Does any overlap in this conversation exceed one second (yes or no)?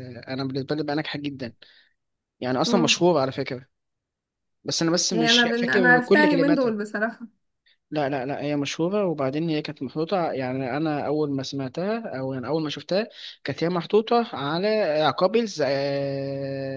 yes